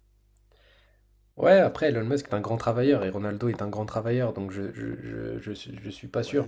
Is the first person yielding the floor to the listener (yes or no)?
yes